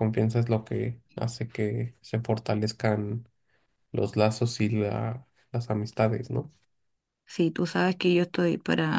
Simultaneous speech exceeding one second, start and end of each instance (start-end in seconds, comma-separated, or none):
none